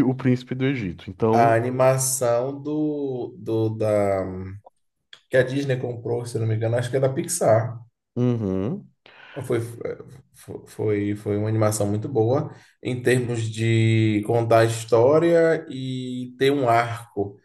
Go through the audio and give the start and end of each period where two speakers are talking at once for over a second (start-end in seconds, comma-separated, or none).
none